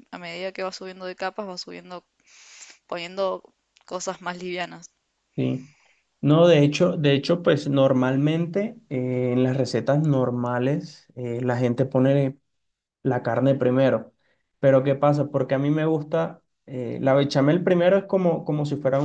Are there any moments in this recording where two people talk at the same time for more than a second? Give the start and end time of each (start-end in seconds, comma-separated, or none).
none